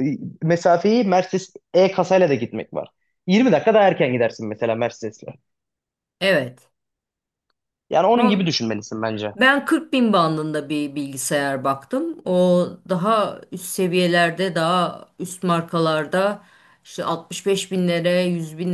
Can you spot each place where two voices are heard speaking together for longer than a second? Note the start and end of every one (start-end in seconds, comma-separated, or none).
none